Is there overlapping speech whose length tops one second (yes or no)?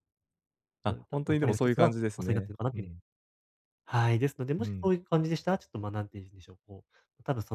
yes